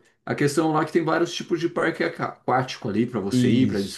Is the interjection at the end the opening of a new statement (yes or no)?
no